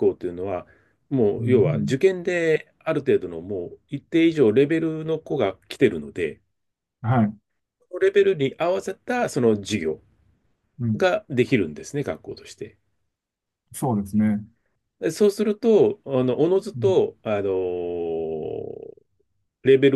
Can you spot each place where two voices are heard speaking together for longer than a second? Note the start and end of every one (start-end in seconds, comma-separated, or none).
none